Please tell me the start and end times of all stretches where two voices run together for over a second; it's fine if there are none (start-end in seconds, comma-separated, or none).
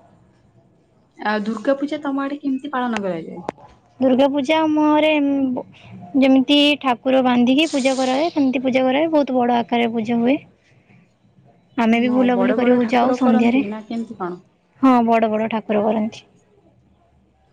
12.1-13.6